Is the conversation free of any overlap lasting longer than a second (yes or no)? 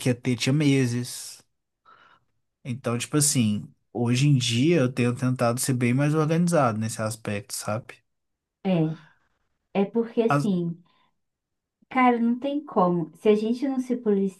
yes